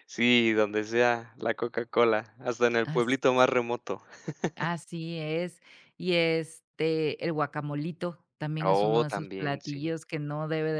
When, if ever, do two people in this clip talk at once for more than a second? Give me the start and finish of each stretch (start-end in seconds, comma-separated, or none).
8.6-9.9